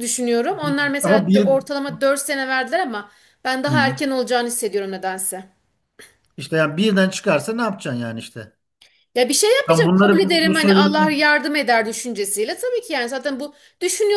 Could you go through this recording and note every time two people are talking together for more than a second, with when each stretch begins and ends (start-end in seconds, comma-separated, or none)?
9.7-11.0